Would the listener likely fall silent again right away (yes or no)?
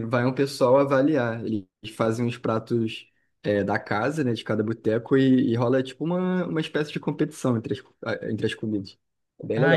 no